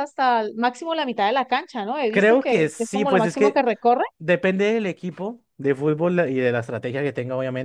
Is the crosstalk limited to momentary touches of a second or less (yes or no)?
no